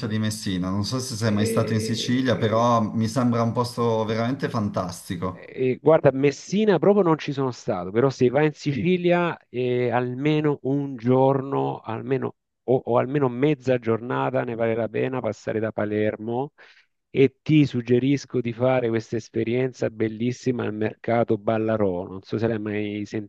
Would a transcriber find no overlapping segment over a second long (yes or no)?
no